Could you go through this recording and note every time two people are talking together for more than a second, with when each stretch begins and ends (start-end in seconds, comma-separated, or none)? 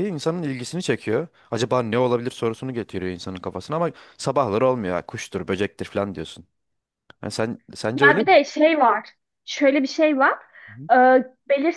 none